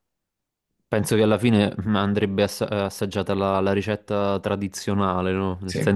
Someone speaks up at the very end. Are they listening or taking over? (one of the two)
listening